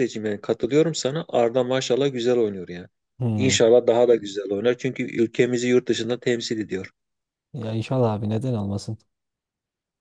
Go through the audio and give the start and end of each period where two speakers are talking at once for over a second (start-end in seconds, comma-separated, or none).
none